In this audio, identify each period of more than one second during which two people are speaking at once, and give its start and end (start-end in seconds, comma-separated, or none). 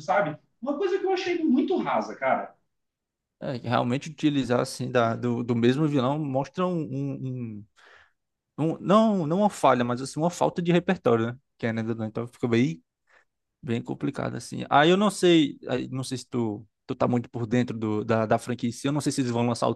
none